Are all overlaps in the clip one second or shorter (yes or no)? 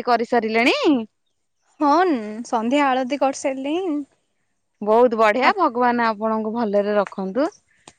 yes